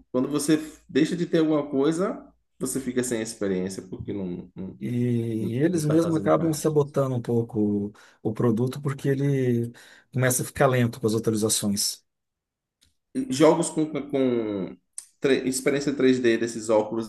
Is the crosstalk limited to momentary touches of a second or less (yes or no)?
no